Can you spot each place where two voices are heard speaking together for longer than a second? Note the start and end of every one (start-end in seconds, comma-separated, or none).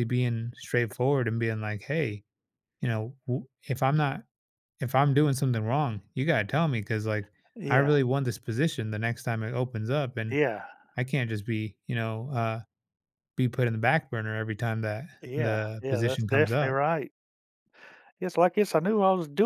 15.2-16.8